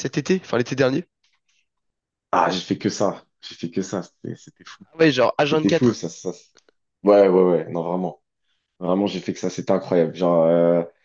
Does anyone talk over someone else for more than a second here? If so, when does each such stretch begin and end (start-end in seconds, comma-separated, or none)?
none